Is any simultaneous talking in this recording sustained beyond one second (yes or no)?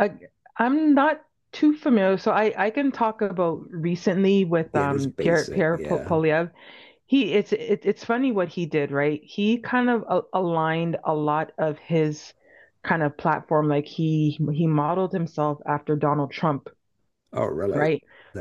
yes